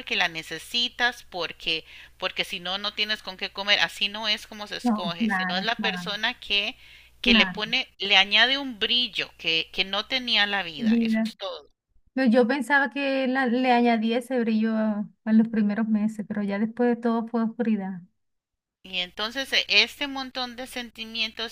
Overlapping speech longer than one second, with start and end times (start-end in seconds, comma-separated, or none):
4.8-6.2